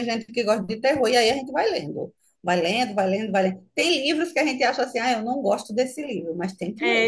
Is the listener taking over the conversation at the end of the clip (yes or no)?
yes